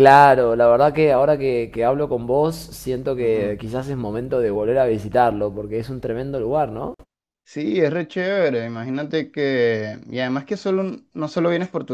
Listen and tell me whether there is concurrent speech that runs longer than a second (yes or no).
no